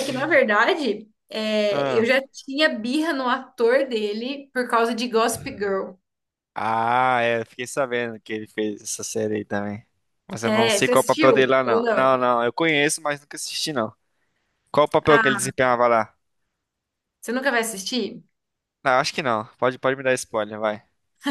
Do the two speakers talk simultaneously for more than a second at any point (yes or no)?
yes